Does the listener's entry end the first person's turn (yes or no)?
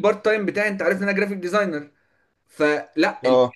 no